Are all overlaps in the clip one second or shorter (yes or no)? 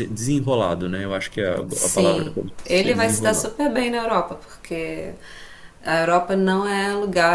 no